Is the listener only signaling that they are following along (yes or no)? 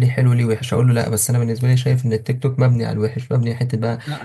no